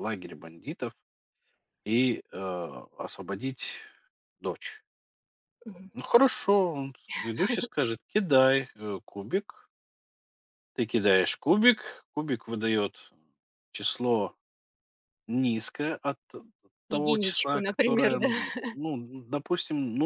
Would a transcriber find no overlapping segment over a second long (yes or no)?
no